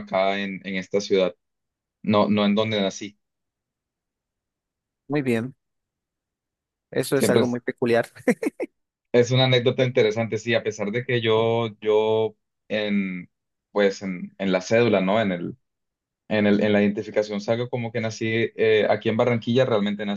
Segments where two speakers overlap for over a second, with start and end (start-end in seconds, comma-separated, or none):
none